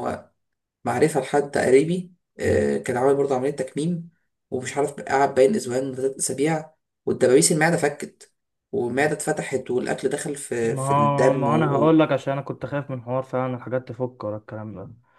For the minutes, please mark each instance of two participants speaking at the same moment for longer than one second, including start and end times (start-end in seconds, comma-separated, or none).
10.6-12.0